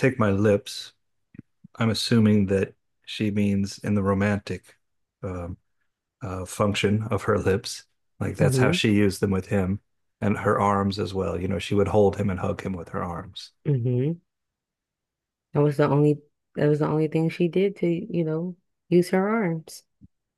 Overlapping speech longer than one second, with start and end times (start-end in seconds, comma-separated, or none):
none